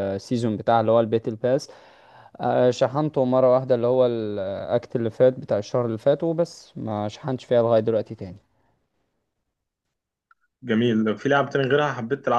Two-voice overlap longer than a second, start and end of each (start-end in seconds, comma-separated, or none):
none